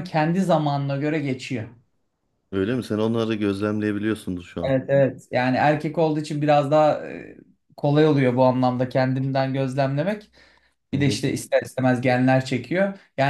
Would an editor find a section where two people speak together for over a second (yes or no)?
no